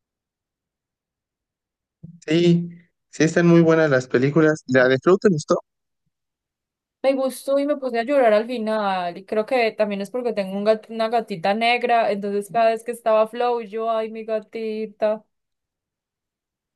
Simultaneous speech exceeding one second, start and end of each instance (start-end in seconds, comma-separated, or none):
none